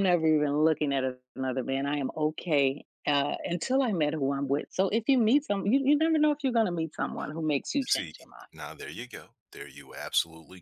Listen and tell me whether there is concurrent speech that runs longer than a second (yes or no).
no